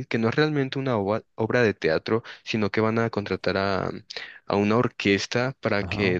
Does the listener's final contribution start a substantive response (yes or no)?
no